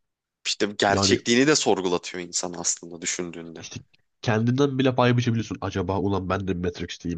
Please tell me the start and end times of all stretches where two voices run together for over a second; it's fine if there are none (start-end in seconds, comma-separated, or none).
none